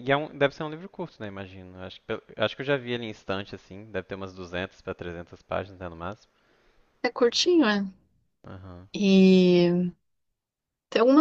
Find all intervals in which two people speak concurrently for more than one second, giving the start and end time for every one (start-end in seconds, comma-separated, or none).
none